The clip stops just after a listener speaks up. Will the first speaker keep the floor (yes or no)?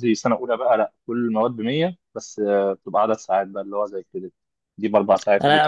no